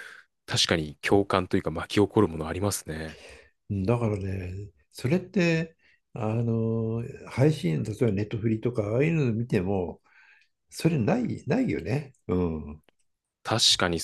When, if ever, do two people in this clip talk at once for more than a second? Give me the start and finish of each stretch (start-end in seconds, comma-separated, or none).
none